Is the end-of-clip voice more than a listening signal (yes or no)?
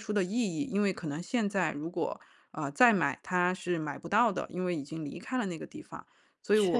no